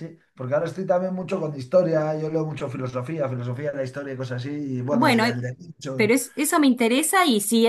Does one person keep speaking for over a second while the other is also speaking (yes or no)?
no